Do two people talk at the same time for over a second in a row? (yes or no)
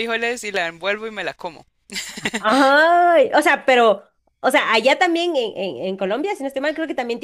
no